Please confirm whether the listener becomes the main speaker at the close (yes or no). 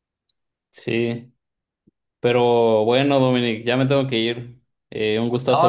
yes